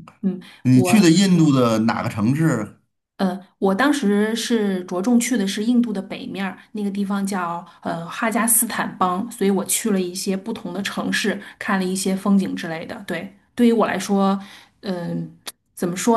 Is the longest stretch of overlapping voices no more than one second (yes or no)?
yes